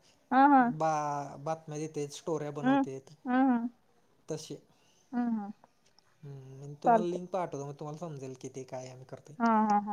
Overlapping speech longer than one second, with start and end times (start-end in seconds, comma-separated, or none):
none